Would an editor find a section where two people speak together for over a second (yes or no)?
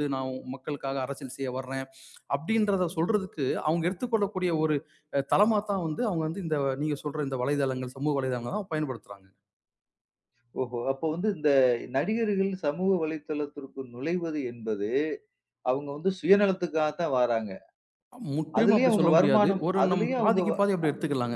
yes